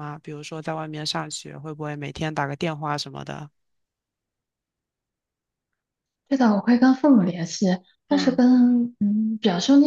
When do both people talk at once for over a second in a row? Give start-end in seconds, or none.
none